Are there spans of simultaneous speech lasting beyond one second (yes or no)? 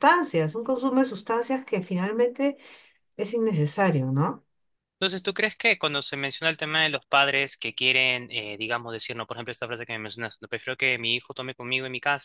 no